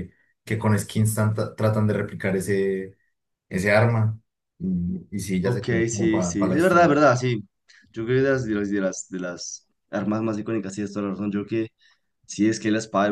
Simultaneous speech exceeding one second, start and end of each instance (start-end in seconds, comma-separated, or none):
5.4-6.9